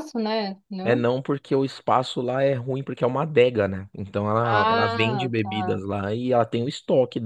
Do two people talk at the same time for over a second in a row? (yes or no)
yes